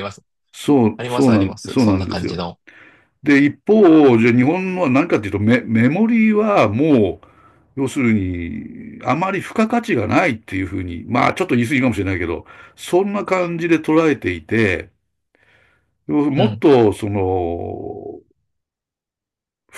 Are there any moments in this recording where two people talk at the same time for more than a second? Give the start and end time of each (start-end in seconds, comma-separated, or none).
1.0-2.4